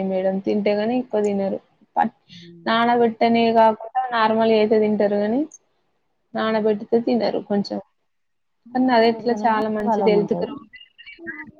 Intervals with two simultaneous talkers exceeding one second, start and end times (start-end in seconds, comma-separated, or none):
8.9-10.5